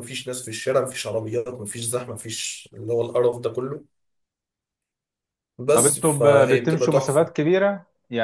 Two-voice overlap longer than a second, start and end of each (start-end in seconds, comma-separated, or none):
5.7-7.3